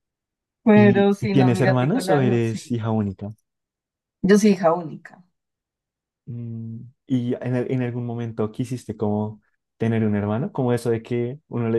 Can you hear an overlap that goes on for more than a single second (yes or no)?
yes